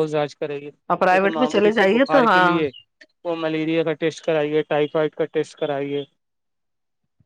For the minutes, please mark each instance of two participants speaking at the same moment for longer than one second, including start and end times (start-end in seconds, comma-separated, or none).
1.1-2.6